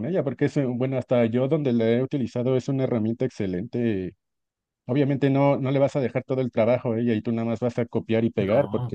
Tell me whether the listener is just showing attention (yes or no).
yes